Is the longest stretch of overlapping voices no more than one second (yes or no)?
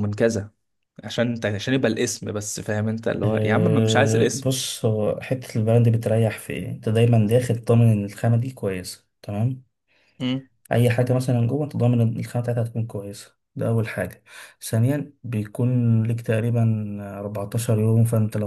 no